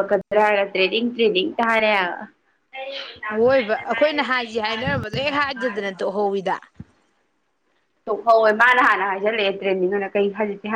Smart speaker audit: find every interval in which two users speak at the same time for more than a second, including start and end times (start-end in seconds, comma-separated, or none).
none